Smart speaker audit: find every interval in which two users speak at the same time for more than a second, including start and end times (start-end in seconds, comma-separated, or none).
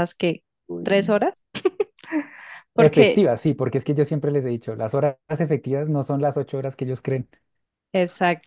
none